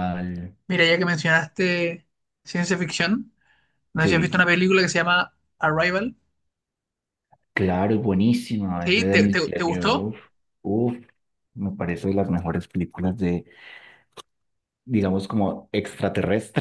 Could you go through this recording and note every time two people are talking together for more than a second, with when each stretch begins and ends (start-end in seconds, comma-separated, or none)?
8.8-10.1